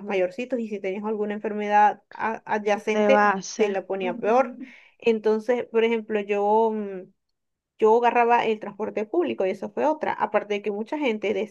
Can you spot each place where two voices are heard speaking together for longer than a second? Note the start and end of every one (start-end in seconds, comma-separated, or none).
2.9-4.6